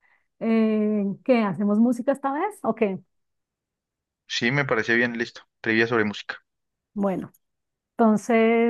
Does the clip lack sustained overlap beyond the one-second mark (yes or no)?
yes